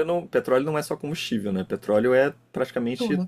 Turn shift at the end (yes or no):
no